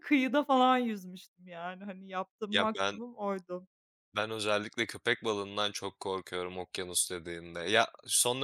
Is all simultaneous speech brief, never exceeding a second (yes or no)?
yes